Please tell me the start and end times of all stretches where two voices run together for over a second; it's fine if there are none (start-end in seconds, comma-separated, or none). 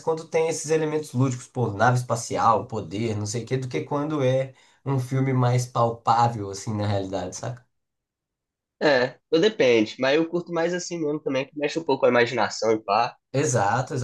none